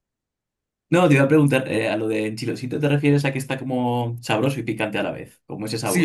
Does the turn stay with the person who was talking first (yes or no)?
no